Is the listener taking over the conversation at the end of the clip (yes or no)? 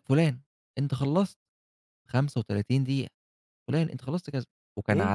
no